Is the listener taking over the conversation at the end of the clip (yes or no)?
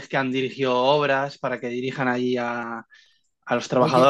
yes